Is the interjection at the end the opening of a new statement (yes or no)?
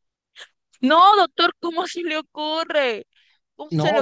yes